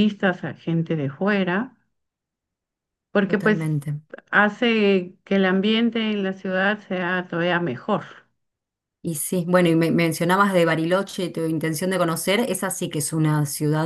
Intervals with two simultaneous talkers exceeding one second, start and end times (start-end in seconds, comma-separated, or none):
none